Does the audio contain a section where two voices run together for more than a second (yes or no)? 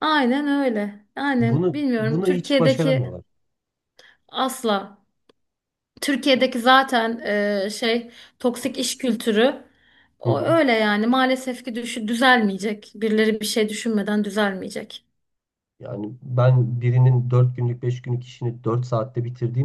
yes